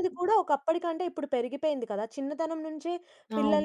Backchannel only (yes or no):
yes